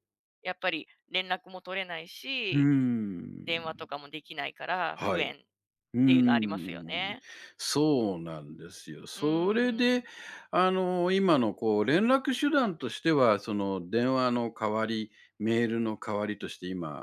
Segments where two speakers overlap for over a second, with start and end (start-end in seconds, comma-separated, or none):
5.9-7.1